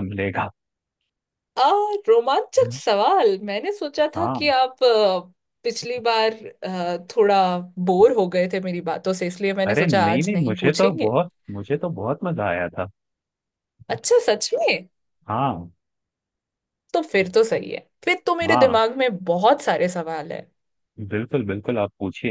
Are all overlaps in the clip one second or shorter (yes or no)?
no